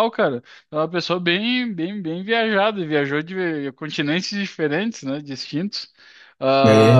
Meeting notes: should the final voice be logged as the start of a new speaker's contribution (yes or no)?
no